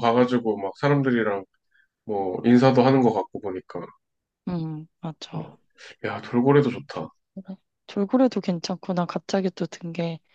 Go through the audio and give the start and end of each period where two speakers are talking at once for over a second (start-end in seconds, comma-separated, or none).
none